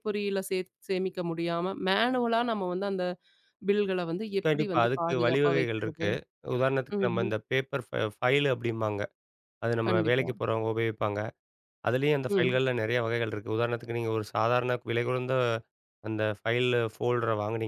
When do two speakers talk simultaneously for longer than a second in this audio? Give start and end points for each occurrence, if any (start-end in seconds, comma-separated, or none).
4.5-6.1